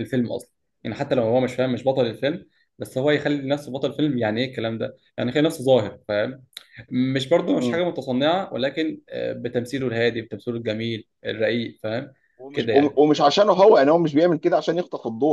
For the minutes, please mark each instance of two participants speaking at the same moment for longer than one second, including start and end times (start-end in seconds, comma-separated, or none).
none